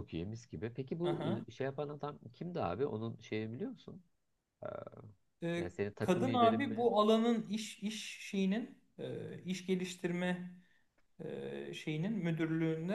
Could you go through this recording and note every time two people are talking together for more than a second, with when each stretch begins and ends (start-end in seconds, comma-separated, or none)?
5.6-6.9